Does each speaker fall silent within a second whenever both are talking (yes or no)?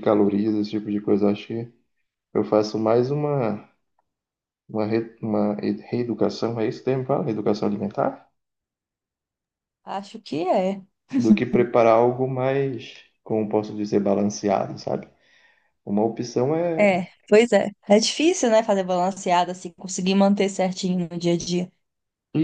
yes